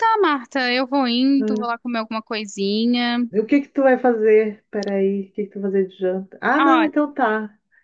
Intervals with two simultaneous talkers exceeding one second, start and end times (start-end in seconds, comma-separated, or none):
none